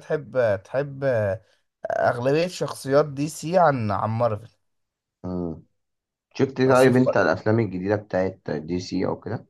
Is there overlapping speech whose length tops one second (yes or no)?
no